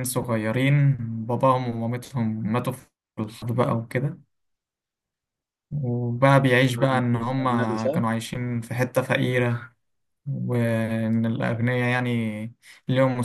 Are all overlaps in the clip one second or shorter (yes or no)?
no